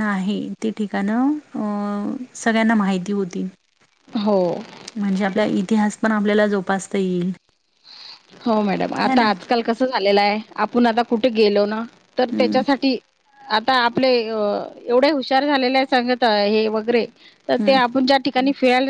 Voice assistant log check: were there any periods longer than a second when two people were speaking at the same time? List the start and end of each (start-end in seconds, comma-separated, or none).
none